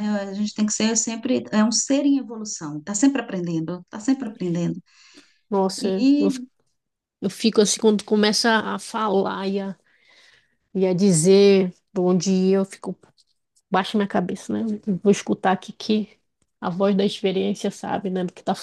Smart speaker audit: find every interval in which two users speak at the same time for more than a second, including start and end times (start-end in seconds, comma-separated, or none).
none